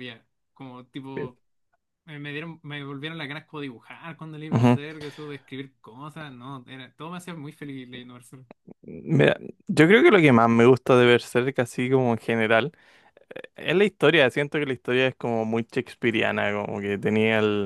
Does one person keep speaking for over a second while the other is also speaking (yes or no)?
no